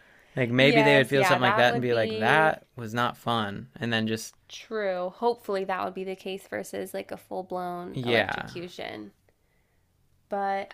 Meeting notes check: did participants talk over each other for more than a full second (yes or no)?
yes